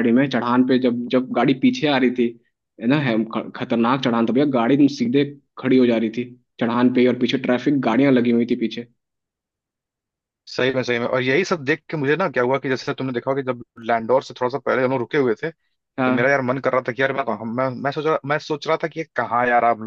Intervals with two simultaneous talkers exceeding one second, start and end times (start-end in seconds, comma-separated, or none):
none